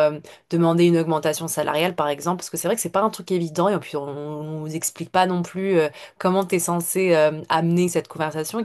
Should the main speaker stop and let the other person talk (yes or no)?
no